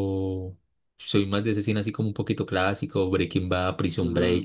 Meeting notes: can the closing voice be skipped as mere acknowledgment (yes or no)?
no